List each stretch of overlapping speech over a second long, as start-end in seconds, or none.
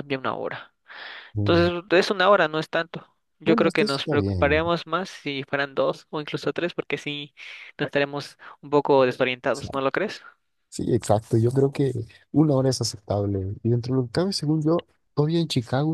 3.4-4.6